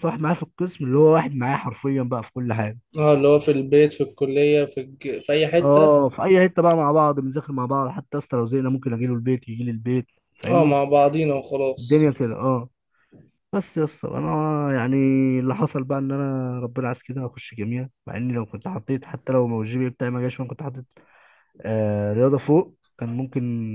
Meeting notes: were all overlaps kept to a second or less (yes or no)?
yes